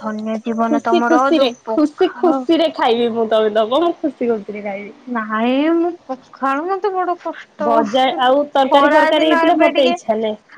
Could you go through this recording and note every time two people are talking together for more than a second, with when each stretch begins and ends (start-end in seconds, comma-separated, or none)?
0.7-2.4